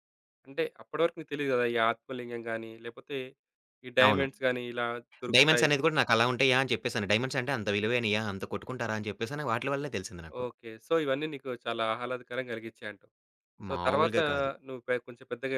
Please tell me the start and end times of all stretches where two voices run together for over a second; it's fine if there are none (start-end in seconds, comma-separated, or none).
none